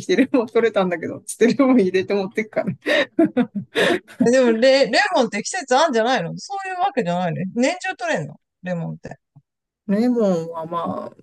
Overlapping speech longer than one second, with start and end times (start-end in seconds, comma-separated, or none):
none